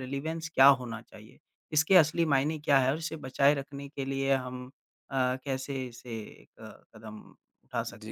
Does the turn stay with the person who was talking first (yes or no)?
no